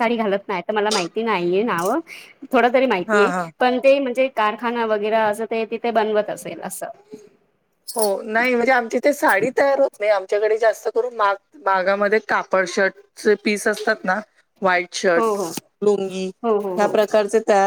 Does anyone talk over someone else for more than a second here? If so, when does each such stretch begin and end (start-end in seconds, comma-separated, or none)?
none